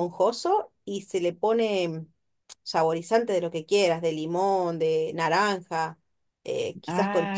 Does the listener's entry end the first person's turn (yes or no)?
no